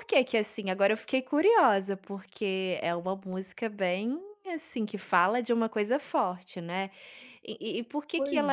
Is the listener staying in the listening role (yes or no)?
yes